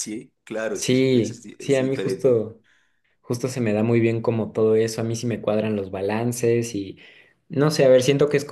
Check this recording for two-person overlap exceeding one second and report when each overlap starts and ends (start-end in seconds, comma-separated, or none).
0.7-2.5